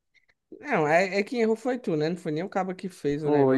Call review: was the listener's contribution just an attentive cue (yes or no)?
no